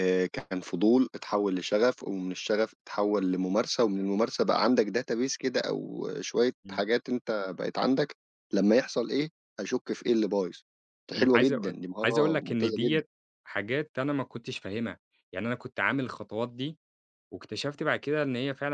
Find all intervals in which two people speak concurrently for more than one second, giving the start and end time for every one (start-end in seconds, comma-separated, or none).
11.2-13.0